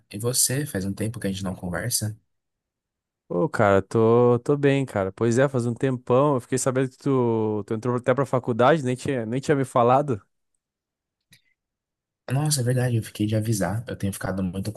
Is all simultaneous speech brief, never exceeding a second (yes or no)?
yes